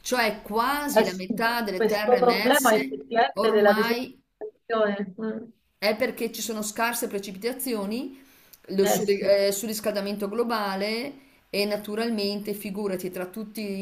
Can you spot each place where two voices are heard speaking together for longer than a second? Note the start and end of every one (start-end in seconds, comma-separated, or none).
0.9-4.2